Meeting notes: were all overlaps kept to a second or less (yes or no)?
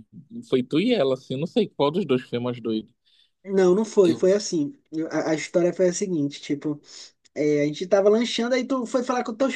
yes